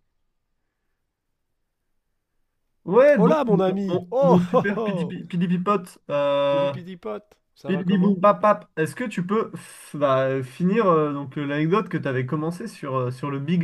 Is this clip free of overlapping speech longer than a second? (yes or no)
no